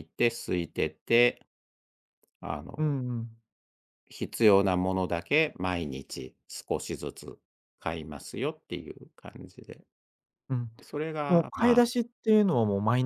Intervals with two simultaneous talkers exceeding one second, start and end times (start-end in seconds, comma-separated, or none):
none